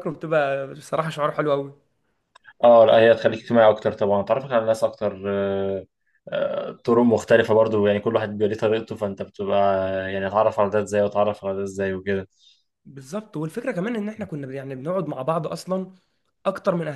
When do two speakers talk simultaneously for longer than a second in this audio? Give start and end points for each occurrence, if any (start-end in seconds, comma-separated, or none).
none